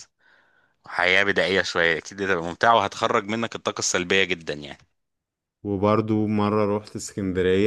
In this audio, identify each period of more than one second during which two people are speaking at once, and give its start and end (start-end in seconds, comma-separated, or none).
none